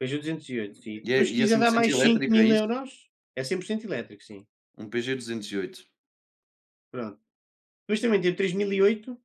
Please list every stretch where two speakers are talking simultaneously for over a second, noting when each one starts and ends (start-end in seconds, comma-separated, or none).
1.1-2.6